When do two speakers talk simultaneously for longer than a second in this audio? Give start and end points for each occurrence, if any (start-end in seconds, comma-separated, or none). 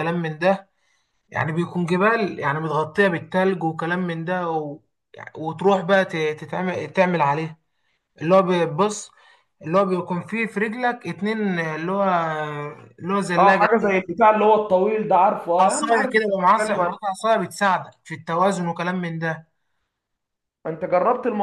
15.6-17.0